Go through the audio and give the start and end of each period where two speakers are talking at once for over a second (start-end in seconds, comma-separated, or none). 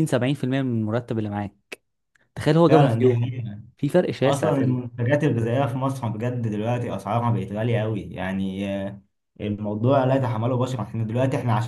none